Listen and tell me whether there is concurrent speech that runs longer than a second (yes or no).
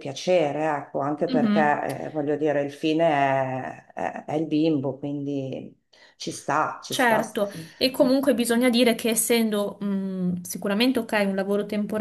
no